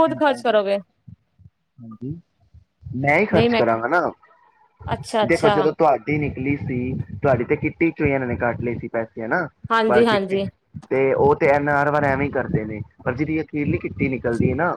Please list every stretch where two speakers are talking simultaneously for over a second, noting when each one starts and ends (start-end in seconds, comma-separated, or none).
none